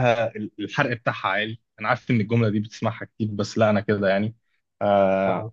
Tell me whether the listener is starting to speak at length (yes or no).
no